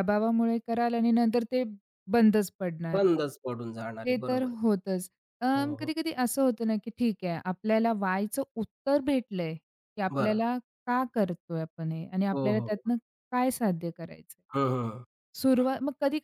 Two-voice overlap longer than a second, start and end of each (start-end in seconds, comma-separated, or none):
none